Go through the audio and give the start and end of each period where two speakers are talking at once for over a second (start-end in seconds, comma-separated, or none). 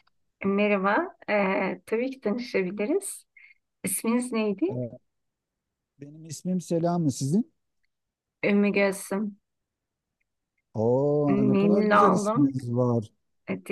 11.3-12.5